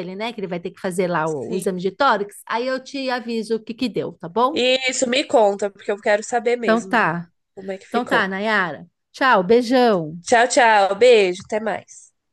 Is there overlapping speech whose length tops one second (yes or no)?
no